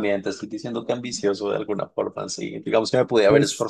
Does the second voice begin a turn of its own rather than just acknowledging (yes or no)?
no